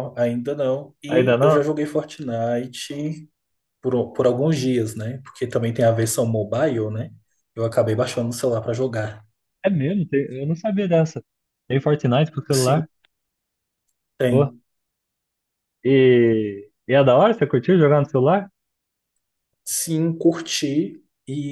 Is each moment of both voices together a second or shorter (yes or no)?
yes